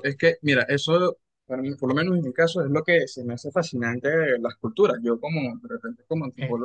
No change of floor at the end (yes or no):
yes